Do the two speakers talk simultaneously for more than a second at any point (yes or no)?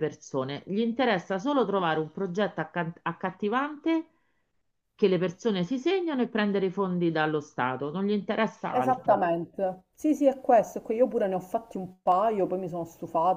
no